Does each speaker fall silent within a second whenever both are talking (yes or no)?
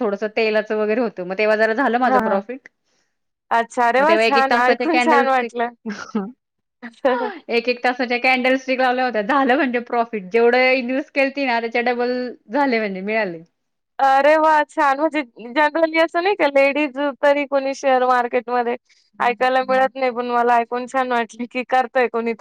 no